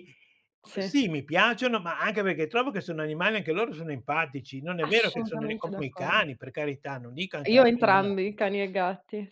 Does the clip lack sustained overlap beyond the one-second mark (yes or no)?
no